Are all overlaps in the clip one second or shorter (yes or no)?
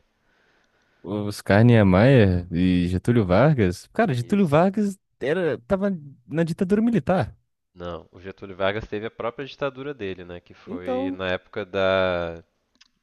yes